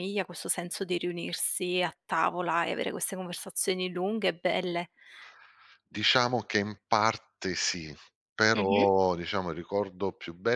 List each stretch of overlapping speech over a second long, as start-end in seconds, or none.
none